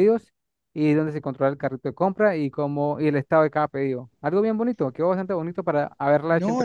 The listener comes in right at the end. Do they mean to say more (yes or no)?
yes